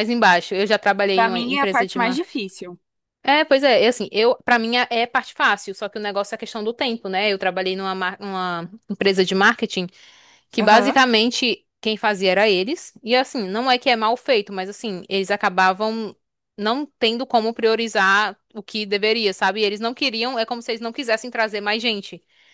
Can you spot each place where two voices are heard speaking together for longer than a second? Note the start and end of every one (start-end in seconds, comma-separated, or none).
1.1-2.4